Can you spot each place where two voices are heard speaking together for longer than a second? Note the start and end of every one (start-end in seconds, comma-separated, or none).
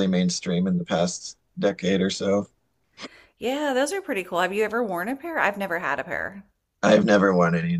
none